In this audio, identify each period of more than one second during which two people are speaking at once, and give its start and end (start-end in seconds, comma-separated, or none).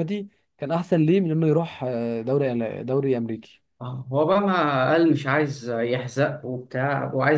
none